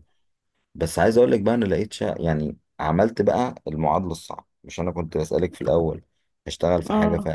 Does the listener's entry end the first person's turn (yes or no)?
no